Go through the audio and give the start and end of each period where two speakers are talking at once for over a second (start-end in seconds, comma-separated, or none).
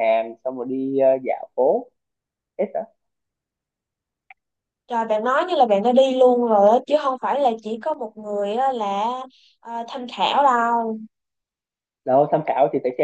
none